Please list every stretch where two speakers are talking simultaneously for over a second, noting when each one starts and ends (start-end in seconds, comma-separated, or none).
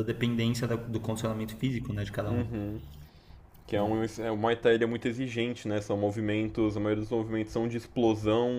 none